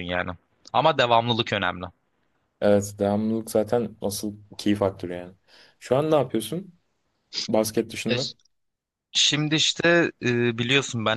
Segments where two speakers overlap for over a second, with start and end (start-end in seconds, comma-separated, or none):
none